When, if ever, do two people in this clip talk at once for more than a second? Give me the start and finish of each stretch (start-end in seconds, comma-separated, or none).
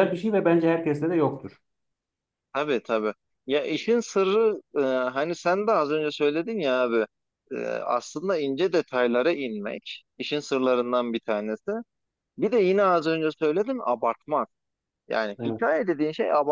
none